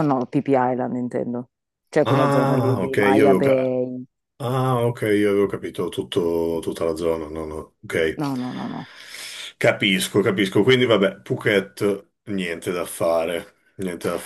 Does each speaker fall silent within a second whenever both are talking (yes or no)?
no